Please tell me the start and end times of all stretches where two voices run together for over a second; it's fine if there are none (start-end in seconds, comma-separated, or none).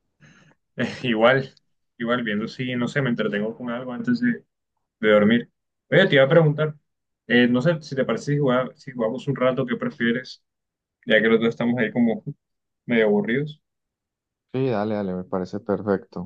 none